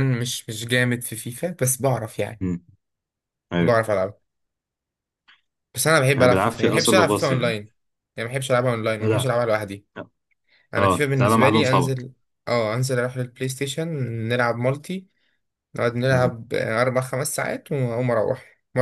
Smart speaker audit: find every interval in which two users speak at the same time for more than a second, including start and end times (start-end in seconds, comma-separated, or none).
6.2-7.6, 10.8-12.1